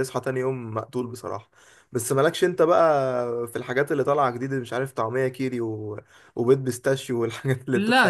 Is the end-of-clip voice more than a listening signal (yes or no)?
yes